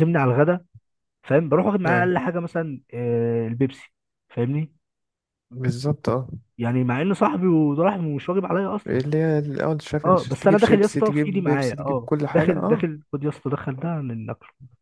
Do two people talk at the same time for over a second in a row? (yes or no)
yes